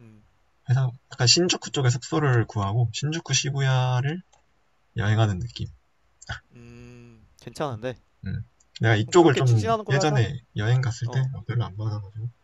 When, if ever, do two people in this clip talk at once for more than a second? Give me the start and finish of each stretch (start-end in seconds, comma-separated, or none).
9.0-10.3